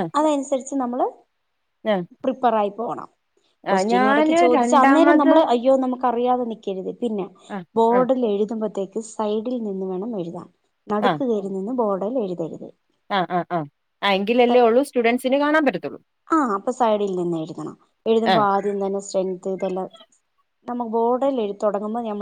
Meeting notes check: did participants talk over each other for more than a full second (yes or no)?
yes